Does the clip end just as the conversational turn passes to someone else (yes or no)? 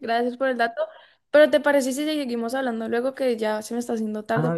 yes